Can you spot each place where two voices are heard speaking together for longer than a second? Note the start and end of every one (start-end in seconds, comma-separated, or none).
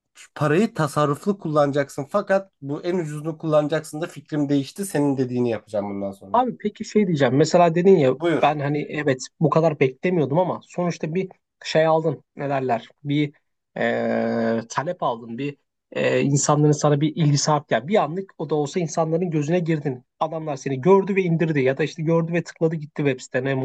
none